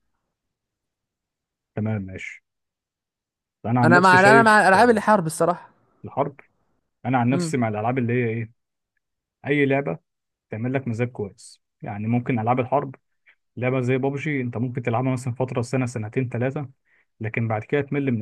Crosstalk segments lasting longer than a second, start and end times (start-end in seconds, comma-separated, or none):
3.8-5.0